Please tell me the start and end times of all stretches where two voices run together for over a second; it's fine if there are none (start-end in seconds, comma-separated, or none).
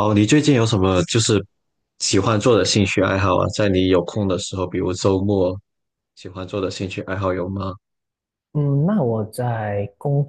none